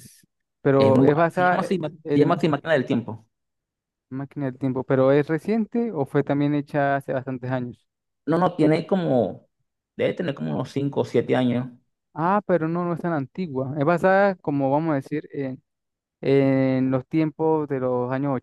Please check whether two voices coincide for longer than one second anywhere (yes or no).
yes